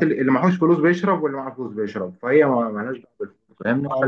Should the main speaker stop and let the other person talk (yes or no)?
yes